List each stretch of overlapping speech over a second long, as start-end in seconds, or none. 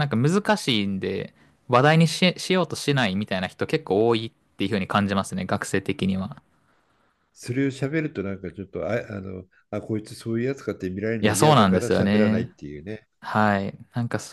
11.2-12.5